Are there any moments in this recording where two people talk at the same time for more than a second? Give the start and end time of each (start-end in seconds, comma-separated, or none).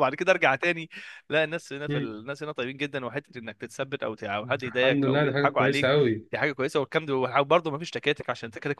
4.7-5.9